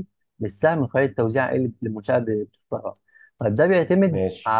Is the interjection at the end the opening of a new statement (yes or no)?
no